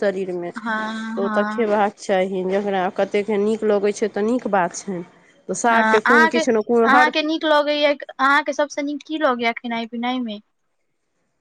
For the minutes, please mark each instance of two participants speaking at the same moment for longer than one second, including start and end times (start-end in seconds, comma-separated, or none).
none